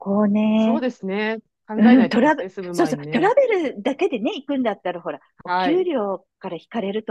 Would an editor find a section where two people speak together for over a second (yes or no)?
yes